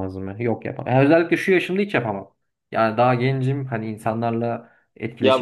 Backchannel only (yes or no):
no